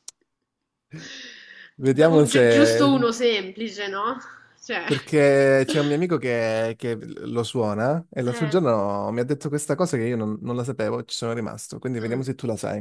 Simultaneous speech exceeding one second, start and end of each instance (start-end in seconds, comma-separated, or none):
1.8-3.0